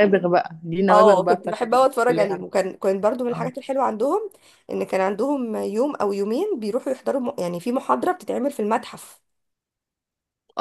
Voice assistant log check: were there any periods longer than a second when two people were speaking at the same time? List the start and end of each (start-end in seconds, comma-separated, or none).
0.9-2.5